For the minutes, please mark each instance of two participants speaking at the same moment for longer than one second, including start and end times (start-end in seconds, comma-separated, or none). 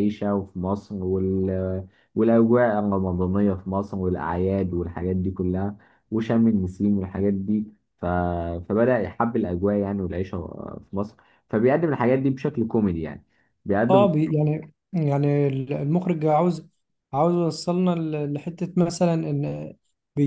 none